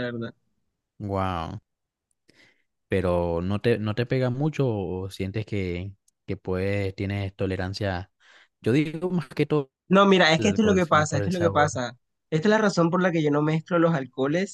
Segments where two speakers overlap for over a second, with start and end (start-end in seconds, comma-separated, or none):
10.4-11.7